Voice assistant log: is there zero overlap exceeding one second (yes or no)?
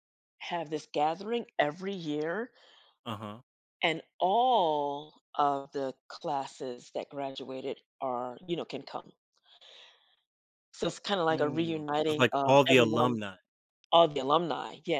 no